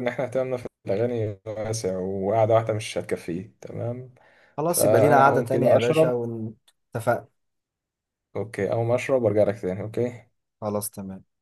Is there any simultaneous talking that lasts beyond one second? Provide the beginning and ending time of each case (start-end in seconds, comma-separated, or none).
4.7-6.1